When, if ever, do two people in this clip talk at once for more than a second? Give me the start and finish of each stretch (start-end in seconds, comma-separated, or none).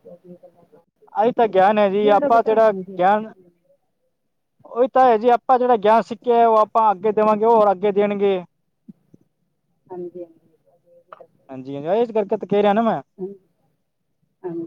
none